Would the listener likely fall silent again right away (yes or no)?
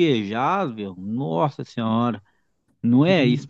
no